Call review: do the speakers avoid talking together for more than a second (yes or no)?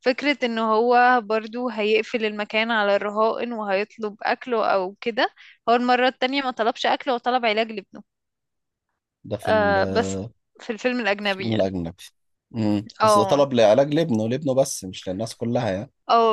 yes